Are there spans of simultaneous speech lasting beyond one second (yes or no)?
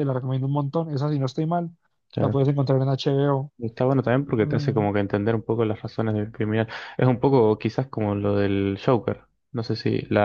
no